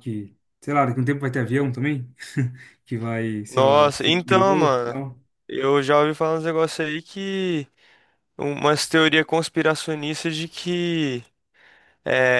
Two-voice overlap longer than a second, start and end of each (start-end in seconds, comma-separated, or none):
3.5-5.0